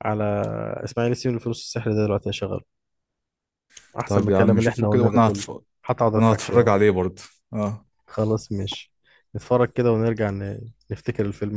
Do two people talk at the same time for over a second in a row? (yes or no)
yes